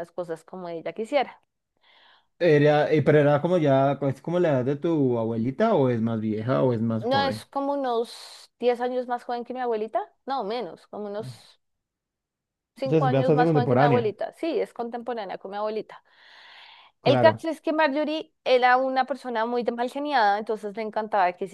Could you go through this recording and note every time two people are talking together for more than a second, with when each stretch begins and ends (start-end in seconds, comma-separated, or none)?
12.8-14.2